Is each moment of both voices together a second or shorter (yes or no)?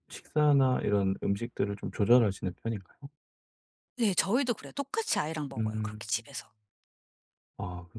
yes